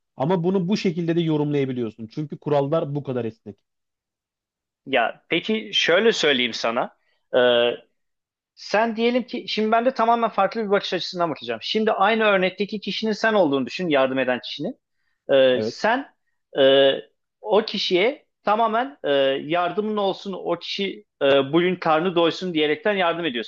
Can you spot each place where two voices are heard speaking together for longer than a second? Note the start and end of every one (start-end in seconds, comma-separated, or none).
none